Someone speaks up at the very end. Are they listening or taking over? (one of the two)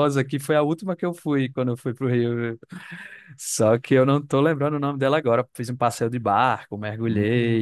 listening